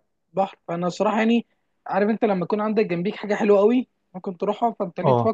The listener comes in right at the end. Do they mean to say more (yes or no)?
no